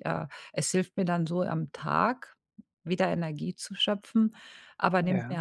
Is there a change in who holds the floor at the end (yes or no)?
no